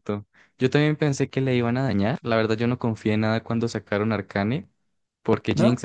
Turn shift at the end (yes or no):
no